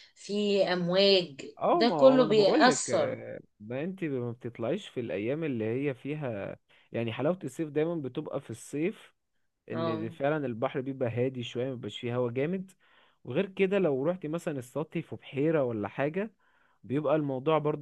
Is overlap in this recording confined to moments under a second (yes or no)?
no